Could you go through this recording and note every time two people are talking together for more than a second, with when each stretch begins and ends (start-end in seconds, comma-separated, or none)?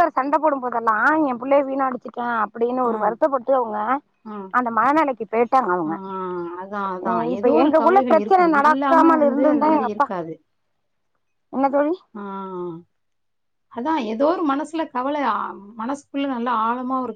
7.3-10.1